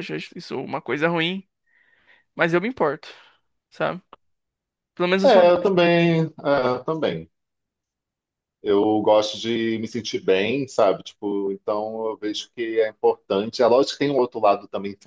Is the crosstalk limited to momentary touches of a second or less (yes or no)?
yes